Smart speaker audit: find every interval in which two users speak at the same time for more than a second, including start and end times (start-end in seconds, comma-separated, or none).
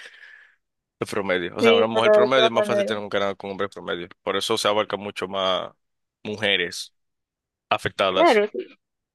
1.6-3.0